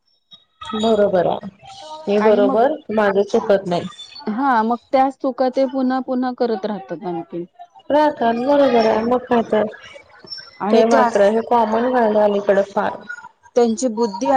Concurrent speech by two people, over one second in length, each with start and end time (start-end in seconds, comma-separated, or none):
none